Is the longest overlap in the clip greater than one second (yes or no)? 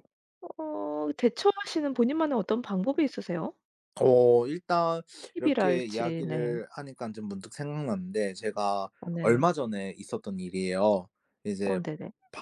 yes